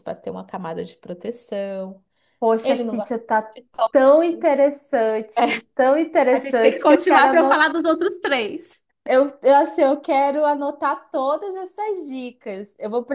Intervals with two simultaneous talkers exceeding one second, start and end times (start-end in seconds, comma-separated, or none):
6.3-7.7